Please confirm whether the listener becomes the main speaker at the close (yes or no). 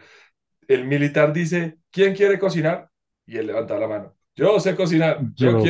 no